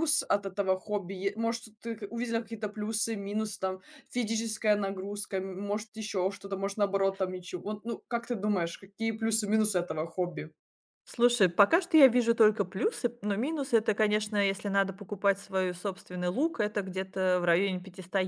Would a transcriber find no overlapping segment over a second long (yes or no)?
yes